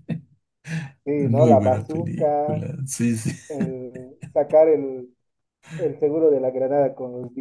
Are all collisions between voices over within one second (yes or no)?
no